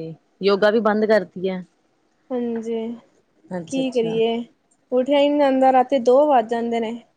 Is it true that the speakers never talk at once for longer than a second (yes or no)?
yes